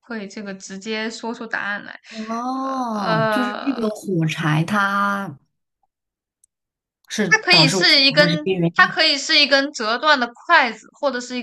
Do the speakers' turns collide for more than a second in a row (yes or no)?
yes